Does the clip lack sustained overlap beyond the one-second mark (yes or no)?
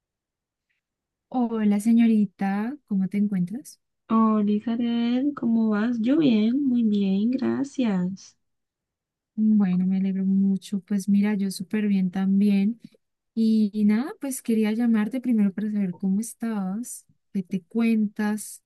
yes